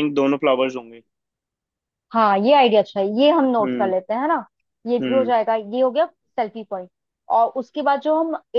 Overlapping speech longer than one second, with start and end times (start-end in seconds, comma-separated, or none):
none